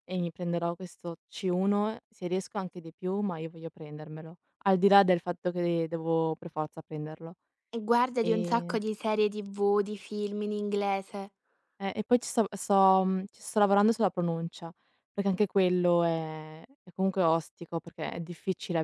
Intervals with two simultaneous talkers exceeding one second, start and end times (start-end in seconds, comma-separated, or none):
none